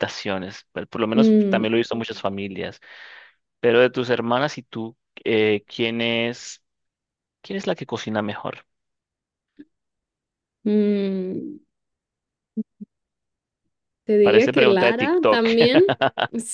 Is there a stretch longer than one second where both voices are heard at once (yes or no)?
yes